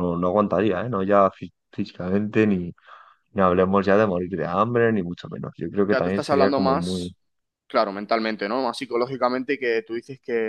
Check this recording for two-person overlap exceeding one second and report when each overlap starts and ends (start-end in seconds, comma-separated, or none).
5.8-7.1